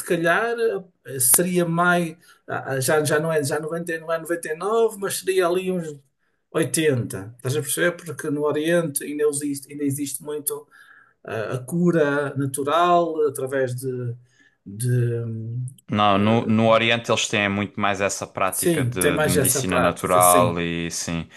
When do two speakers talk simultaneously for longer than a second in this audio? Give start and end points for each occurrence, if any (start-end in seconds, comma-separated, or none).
18.5-20.6